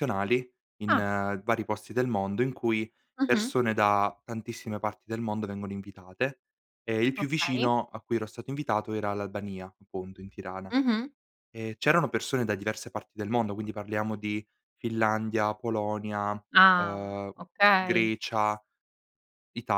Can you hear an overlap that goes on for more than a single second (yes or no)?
no